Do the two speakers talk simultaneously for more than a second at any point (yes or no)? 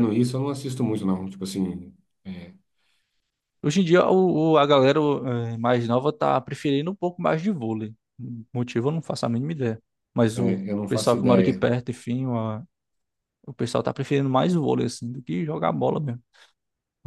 yes